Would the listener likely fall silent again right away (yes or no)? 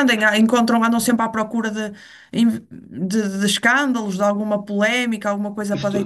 no